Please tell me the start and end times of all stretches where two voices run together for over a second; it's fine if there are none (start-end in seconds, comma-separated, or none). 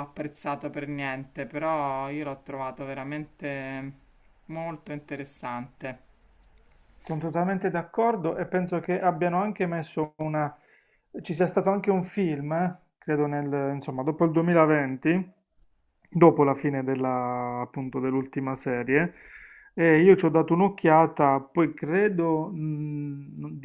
none